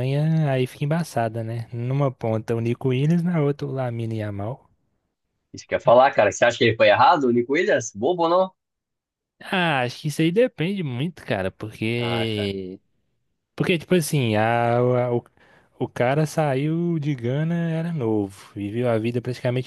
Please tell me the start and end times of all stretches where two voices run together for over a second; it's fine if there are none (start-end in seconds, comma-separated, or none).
none